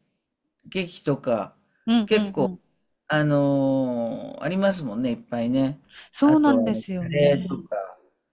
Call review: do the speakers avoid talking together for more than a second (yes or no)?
no